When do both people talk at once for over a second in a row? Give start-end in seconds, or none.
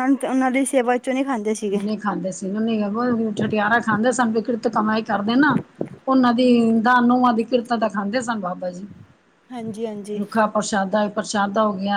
none